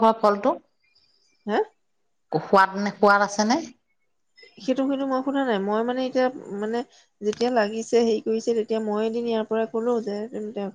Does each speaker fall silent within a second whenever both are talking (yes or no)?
yes